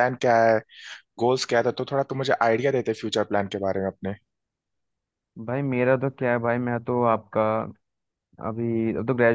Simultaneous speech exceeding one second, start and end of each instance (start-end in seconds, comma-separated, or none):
none